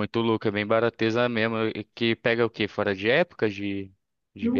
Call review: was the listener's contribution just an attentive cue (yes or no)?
no